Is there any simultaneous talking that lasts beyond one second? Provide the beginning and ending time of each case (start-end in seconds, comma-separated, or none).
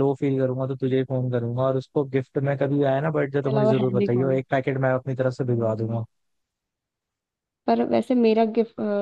3.2-4.4